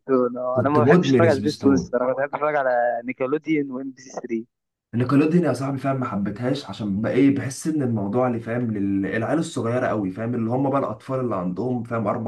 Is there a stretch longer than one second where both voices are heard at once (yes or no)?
yes